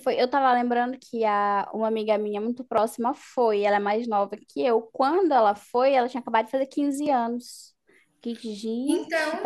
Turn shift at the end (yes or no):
no